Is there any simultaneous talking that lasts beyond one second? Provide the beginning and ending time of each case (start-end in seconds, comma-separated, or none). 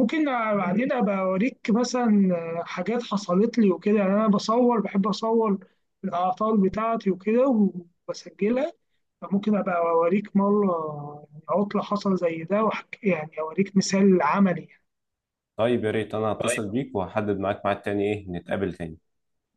none